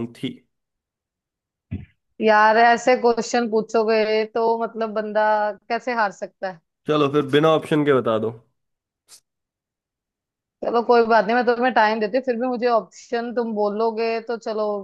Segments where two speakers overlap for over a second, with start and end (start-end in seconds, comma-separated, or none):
none